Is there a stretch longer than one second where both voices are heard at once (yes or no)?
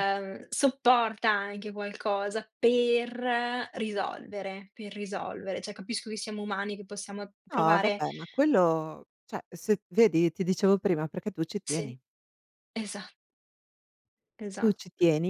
no